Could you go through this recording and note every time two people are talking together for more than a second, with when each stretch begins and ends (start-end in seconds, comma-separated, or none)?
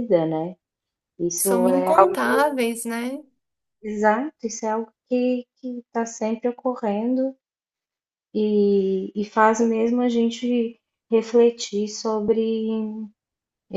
none